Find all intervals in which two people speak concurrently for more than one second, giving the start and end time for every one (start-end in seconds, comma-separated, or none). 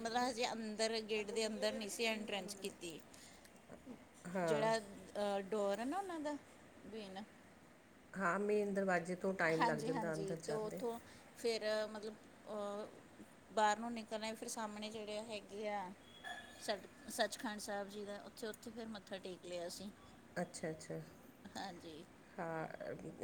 9.6-10.8